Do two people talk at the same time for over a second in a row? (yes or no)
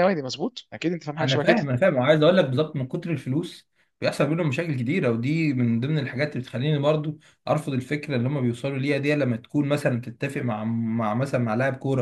no